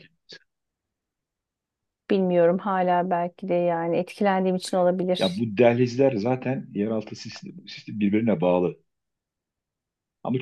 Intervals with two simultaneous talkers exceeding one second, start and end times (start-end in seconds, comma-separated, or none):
none